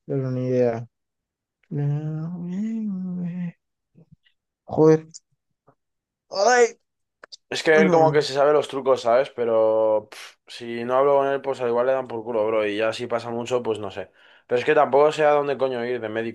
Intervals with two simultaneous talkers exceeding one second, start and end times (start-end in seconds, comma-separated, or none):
none